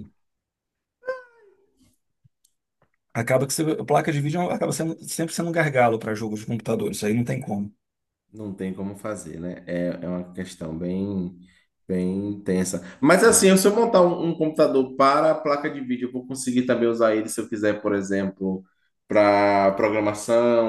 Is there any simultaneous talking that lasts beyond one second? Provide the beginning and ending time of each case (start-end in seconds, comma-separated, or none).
none